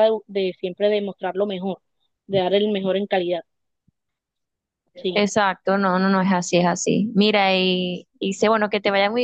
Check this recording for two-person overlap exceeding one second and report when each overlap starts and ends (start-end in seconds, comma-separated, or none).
none